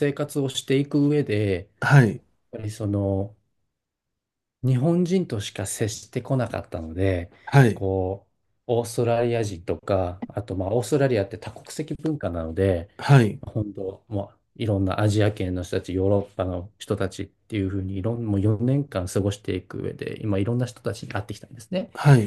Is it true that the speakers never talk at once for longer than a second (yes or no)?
yes